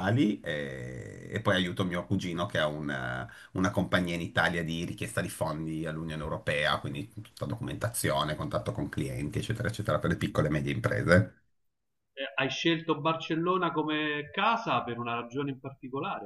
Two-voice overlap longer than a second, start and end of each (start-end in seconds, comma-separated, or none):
none